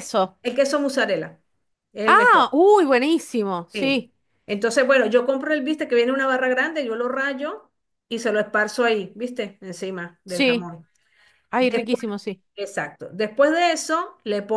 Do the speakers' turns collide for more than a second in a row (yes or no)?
no